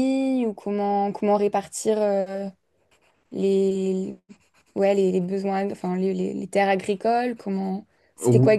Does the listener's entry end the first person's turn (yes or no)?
yes